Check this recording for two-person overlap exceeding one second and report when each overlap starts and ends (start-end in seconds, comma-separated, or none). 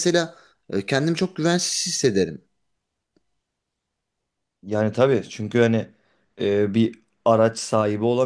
none